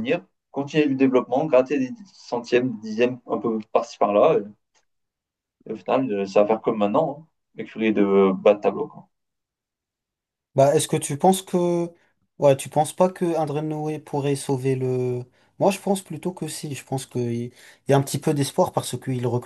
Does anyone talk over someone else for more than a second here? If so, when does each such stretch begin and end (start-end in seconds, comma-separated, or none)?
none